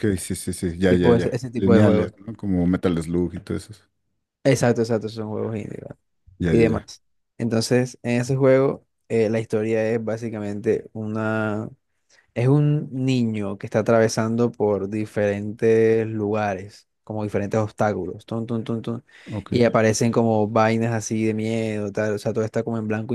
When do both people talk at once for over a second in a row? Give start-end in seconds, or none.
0.9-2.1